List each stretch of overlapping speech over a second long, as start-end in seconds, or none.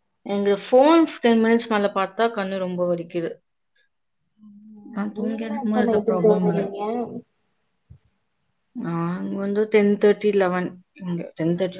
4.9-6.6